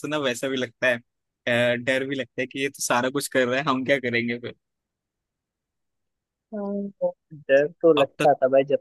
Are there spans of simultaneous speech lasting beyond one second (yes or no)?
no